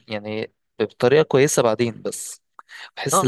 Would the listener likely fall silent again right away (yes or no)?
no